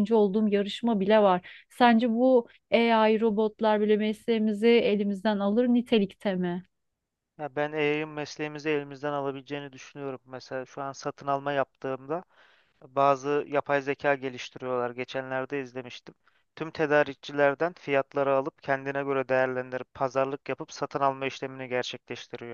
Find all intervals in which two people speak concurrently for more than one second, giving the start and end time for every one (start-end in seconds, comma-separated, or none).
none